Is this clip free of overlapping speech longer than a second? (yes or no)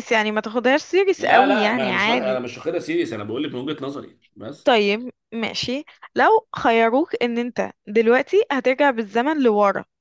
no